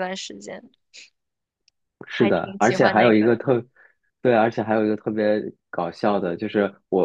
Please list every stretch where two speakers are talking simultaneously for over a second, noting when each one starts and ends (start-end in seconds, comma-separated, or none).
2.2-3.4